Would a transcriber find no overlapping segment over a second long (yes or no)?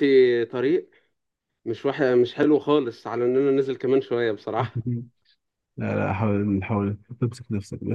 yes